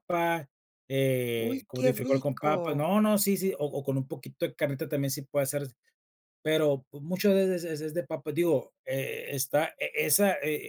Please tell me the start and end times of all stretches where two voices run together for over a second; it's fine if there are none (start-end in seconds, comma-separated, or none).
1.4-2.9